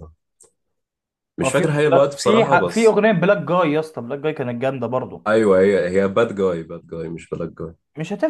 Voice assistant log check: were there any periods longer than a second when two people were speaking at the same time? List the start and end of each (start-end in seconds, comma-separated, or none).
1.4-3.0